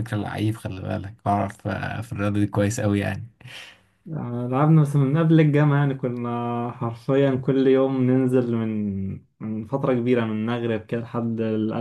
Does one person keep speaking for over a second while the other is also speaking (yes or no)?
no